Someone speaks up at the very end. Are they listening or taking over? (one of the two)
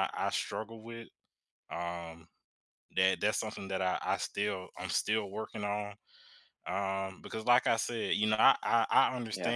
listening